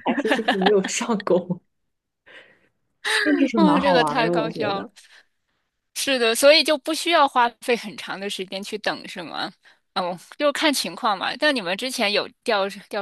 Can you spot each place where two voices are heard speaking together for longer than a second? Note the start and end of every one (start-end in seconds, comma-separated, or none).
3.5-4.9